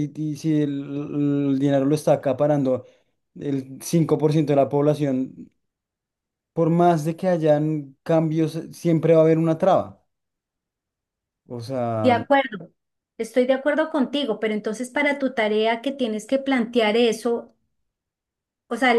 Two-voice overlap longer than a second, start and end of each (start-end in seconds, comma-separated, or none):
none